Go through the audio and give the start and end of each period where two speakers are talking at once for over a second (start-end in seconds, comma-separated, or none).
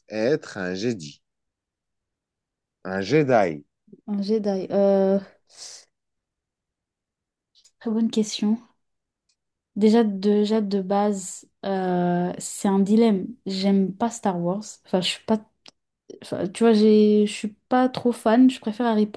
none